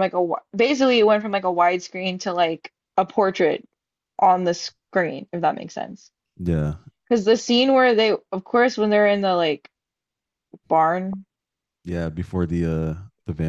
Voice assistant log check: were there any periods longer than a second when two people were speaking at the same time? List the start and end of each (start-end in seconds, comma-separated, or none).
none